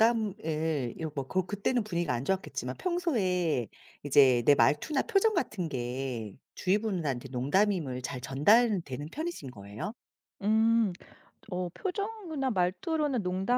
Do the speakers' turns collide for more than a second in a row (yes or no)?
no